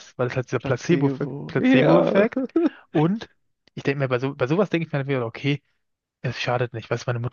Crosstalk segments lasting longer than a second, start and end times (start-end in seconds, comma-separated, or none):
0.6-2.2